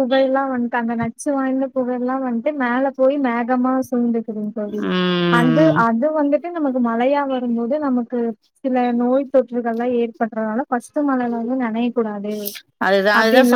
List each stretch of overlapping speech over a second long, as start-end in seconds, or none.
none